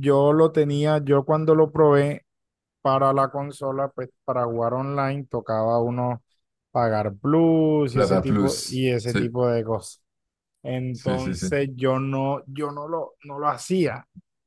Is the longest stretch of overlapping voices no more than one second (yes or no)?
no